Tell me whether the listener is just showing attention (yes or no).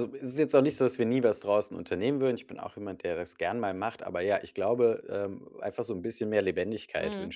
yes